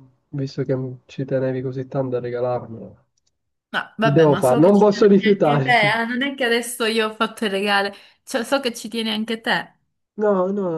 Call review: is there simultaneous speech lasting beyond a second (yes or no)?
yes